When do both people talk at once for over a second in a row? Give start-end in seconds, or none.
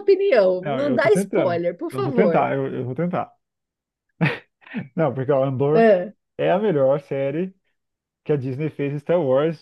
0.6-2.5